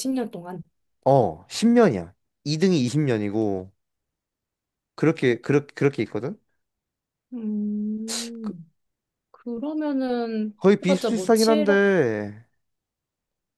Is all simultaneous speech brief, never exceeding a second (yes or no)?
no